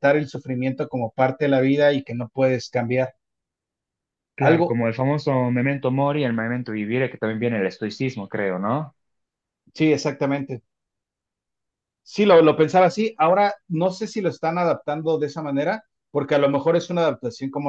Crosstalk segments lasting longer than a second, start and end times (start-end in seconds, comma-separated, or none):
none